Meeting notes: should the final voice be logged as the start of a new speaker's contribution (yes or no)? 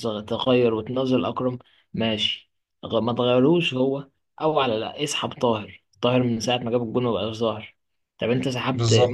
no